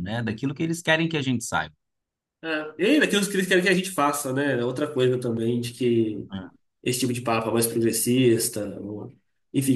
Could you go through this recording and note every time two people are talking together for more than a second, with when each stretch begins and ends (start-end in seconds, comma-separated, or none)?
none